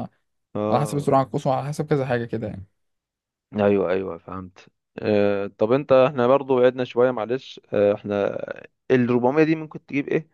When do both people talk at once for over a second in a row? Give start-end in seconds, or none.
none